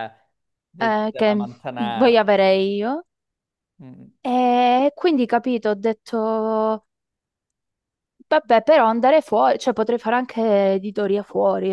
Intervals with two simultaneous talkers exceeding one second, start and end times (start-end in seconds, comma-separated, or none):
0.8-2.3